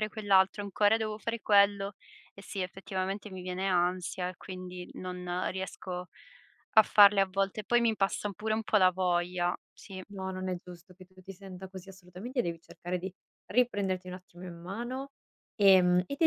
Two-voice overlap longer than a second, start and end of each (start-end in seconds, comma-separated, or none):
none